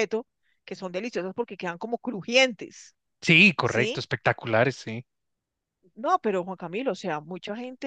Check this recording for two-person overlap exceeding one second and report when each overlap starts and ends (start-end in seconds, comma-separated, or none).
none